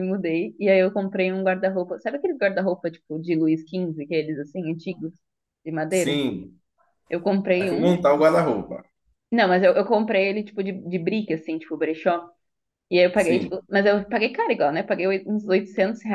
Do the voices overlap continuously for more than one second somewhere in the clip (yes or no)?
no